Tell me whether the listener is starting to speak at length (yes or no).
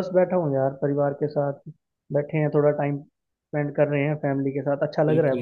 yes